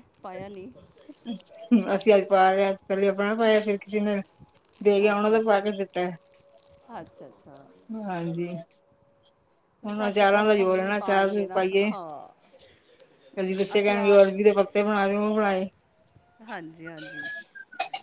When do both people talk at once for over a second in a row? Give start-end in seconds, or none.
9.9-11.9